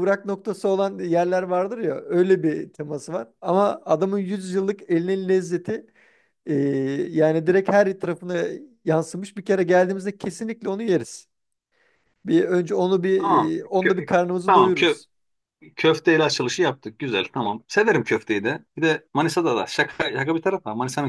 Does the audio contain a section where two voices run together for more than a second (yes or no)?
yes